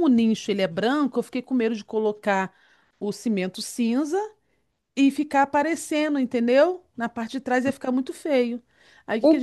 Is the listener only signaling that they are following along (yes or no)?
no